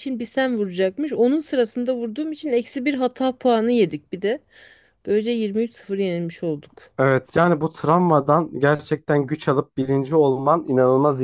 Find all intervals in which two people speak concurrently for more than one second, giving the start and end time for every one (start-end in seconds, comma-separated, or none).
none